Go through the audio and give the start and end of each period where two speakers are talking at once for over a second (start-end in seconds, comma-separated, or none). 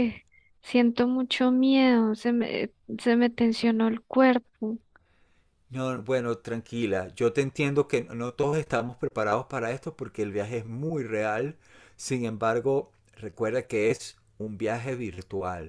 none